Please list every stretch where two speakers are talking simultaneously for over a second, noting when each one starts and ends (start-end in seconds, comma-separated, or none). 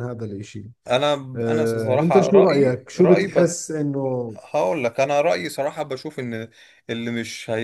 1.4-3.5